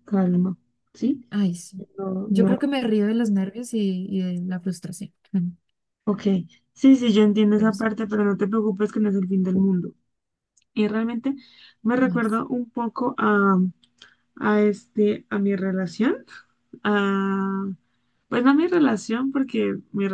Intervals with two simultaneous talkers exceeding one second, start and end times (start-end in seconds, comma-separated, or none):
none